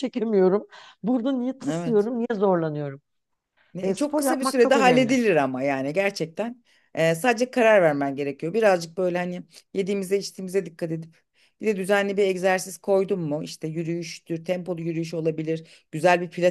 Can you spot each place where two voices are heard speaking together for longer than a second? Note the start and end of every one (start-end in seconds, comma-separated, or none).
3.8-5.2